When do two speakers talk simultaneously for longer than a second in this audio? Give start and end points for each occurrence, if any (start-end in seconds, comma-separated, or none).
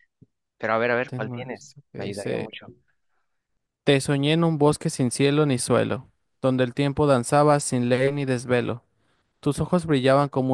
1.1-2.5